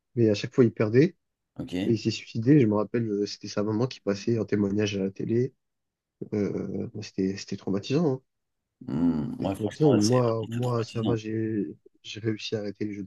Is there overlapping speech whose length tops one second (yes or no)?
yes